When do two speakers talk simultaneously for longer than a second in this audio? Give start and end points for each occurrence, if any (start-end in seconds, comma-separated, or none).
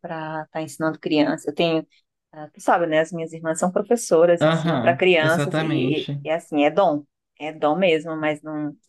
4.4-6.2